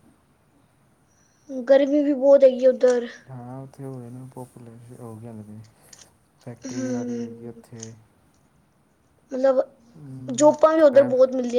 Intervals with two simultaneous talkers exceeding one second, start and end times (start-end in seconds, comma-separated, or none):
none